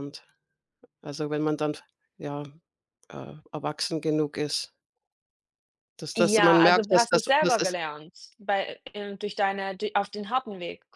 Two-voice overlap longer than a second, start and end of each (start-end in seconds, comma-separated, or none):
6.2-7.8